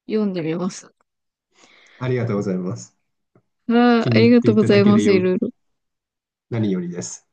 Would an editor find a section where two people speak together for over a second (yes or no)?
yes